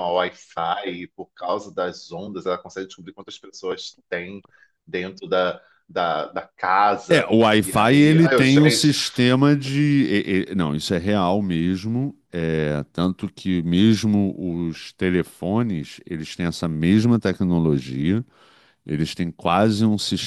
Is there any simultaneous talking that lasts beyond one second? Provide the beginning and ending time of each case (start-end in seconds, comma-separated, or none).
7.1-8.9